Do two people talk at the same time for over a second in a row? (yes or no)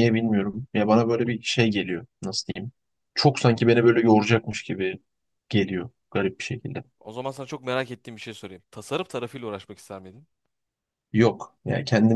no